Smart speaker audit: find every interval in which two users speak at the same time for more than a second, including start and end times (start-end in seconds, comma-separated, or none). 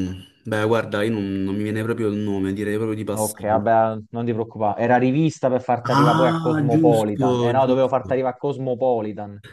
5.8-8.2